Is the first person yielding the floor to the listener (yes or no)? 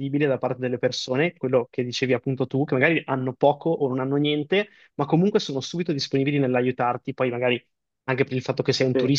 no